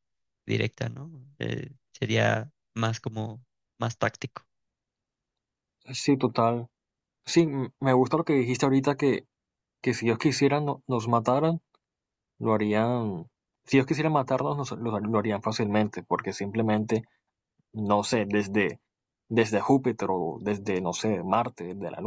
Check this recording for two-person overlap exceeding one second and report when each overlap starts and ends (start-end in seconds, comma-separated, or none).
none